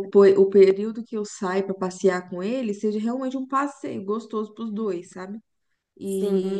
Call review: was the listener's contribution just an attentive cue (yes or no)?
yes